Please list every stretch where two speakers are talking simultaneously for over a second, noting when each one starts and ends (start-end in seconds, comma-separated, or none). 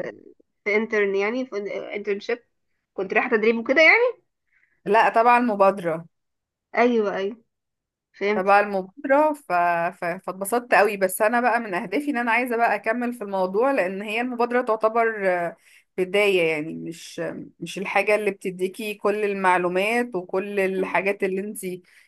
none